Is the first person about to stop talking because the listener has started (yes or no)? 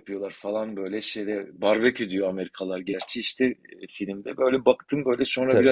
no